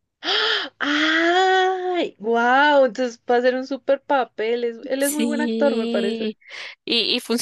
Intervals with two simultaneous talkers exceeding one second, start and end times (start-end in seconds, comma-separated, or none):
5.0-6.3